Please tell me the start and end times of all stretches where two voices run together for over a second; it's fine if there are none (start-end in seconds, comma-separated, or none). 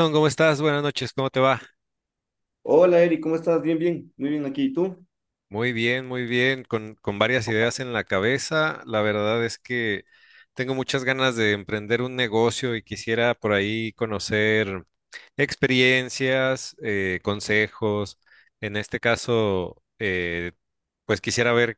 none